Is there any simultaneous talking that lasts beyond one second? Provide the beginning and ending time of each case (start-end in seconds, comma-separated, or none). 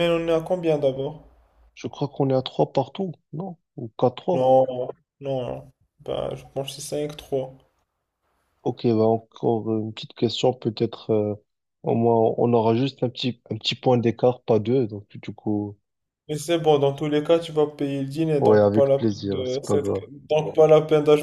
18.4-19.9